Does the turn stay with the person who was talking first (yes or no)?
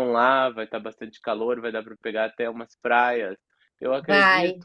yes